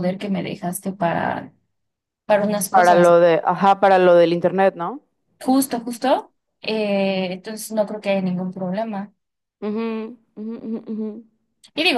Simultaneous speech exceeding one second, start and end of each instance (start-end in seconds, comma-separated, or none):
none